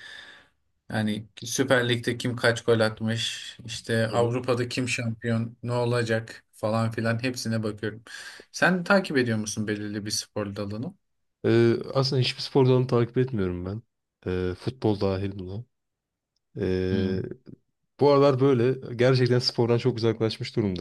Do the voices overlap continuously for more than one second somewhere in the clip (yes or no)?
no